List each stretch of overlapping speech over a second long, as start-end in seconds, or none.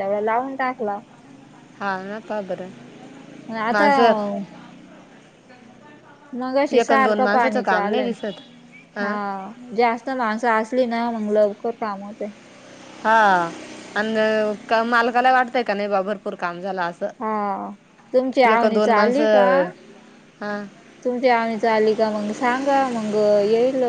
6.7-8.1